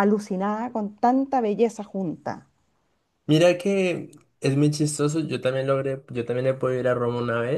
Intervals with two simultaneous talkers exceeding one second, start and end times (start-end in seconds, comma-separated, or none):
none